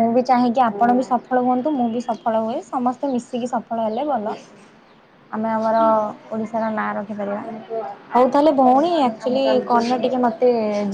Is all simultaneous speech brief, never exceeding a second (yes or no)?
no